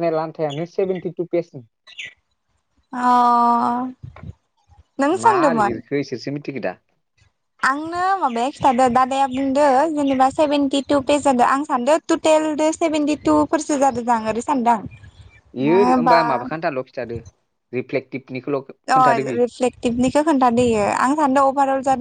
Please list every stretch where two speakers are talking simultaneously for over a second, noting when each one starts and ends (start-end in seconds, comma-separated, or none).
none